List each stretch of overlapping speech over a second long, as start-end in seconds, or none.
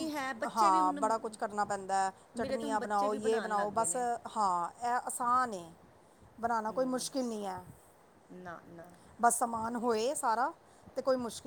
2.4-4.0